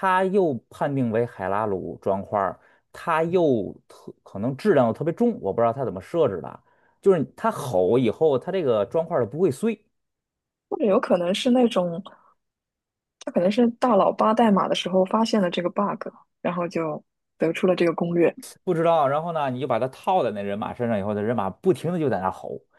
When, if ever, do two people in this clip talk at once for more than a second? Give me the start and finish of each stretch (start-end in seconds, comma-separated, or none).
none